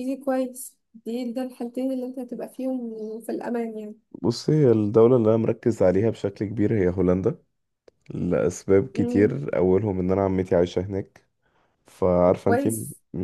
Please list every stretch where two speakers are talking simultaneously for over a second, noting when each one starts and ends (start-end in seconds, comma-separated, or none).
none